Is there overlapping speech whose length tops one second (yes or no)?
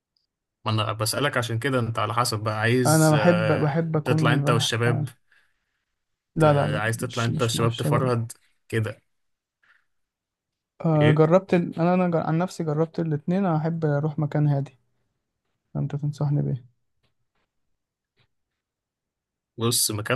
yes